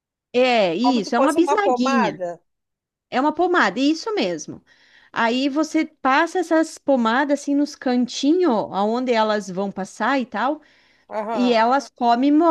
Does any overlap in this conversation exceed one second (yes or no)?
yes